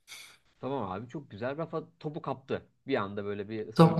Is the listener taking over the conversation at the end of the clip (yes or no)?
yes